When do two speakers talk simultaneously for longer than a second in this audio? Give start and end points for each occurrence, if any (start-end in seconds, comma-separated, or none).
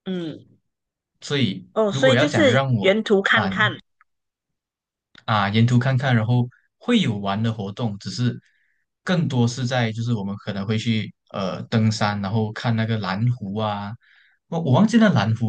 1.7-3.5